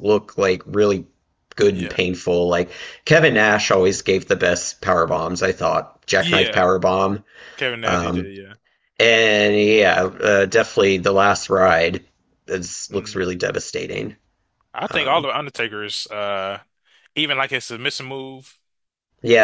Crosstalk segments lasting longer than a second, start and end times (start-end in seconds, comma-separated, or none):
none